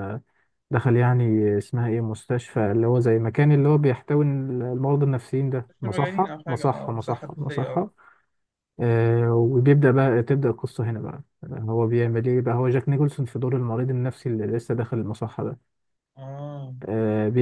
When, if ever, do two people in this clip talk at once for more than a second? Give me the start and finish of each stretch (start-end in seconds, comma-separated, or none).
5.7-7.8